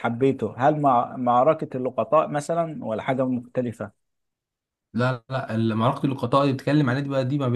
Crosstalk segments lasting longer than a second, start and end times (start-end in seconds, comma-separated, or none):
none